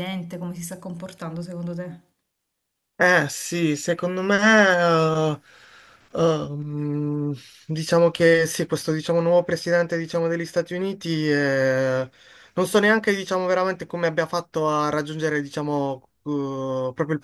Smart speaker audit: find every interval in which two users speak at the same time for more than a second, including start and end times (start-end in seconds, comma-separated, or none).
none